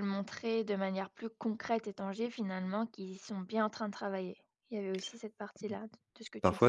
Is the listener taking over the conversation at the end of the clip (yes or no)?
yes